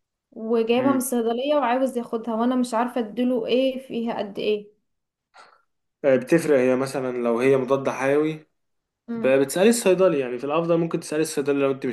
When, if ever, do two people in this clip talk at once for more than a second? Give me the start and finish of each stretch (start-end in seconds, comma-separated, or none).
none